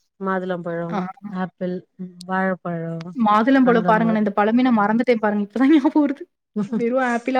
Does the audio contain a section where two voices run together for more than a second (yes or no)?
no